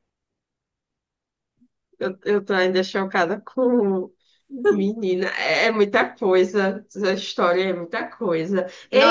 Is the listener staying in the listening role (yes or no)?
yes